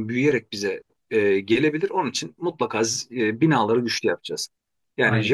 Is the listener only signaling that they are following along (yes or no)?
yes